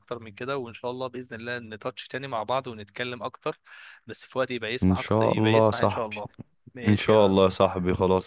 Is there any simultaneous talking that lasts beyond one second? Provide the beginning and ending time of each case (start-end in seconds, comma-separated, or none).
4.8-6.2